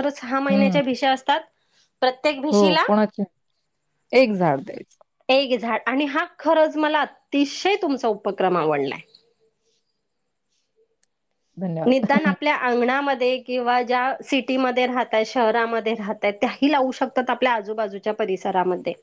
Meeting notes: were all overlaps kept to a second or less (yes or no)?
yes